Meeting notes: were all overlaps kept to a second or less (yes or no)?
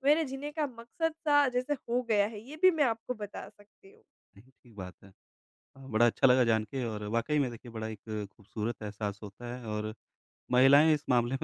yes